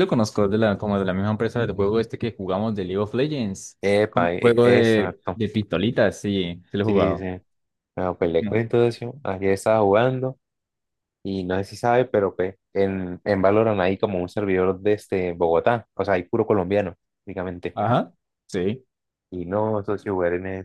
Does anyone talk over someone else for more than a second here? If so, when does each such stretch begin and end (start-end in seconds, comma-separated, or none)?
3.8-5.4